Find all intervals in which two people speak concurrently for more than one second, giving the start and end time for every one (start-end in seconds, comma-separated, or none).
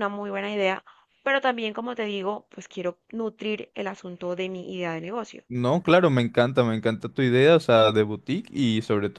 none